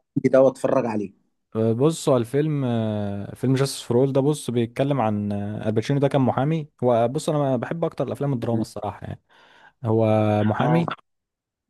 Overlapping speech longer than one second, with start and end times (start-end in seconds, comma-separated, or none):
none